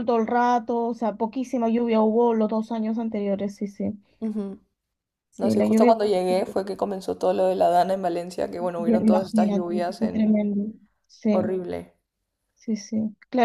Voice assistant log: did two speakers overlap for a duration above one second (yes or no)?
yes